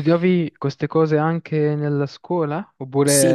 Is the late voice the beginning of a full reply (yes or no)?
yes